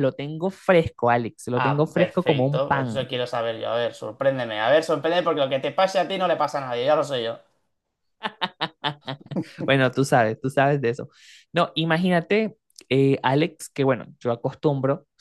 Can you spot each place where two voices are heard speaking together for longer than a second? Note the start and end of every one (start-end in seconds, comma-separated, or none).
1.6-3.0